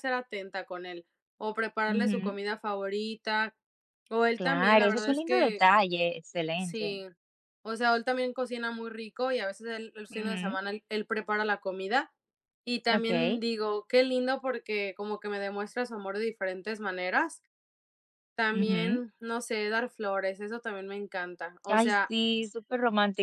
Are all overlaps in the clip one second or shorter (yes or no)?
no